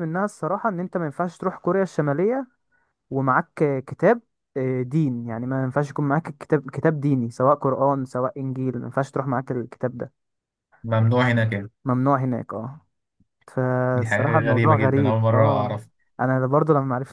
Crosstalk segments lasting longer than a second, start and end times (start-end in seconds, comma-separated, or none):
13.9-15.8